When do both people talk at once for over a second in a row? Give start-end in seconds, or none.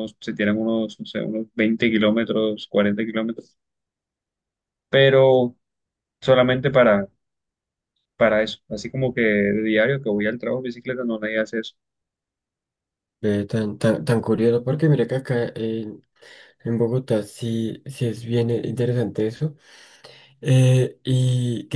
none